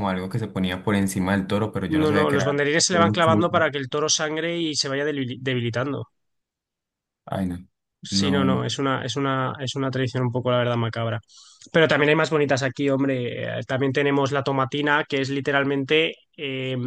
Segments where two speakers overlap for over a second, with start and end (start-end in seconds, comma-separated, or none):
2.0-3.5